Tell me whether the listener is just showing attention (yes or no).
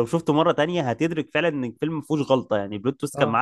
no